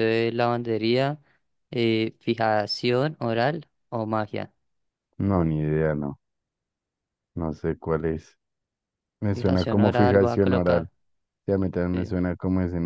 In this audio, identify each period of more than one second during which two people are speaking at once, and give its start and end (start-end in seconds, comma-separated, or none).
9.3-10.9